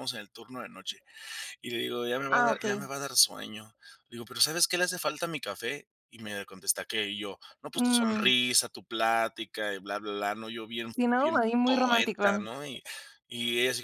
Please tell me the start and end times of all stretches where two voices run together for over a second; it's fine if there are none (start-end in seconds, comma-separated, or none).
10.9-12.5